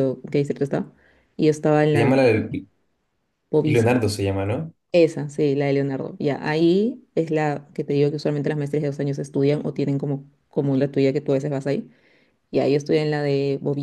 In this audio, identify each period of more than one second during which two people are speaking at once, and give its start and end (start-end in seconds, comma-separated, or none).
none